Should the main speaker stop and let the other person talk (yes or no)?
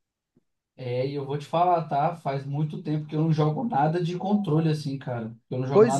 yes